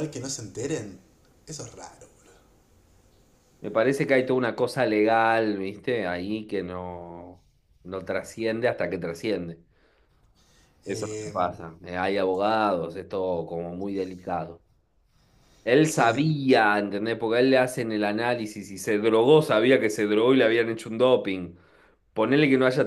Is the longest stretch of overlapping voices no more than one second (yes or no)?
yes